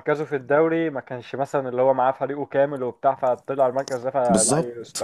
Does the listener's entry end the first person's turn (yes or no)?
no